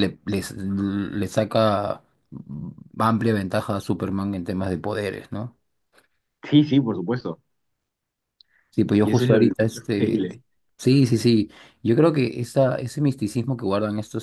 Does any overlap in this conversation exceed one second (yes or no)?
yes